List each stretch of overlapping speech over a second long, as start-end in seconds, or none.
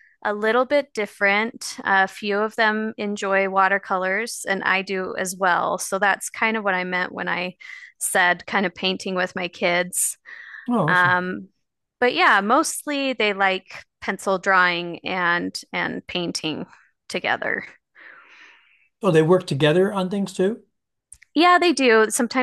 none